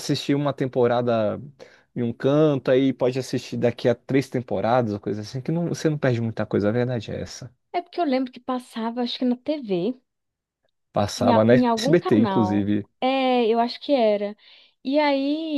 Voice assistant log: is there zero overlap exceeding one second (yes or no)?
no